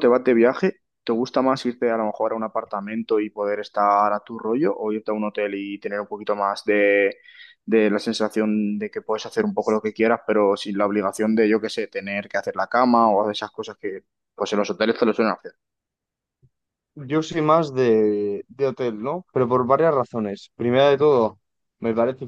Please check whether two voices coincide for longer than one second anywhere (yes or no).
no